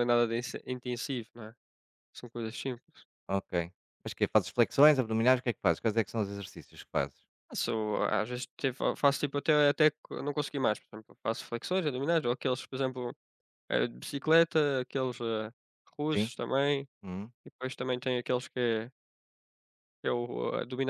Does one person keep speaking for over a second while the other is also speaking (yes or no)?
no